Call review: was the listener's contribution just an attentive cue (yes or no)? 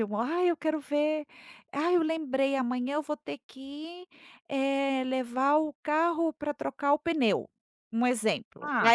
yes